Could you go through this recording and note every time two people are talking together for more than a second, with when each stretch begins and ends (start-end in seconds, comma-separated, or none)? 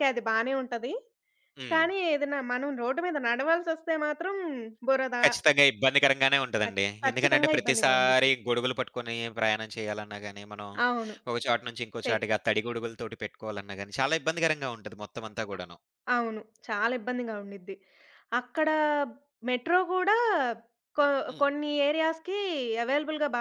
6.6-8.3